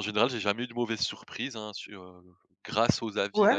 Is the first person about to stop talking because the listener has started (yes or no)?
yes